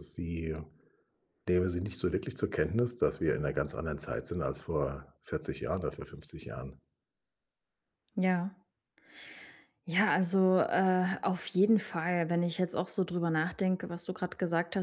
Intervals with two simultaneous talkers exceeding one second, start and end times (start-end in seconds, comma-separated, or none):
none